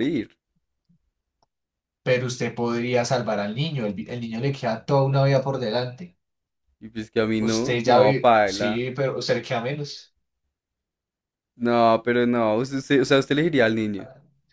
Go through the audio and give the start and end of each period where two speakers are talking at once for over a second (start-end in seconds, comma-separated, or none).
7.4-8.8